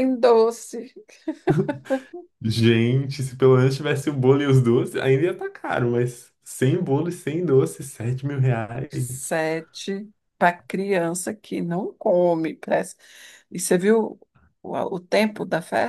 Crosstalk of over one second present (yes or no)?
no